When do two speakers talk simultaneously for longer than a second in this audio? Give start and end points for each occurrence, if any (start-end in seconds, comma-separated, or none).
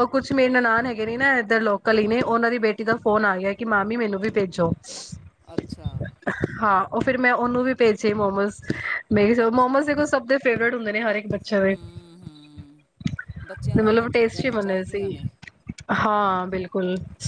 13.8-15.0